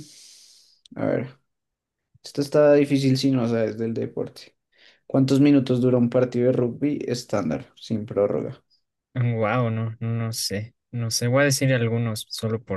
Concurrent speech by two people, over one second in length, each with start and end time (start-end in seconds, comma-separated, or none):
none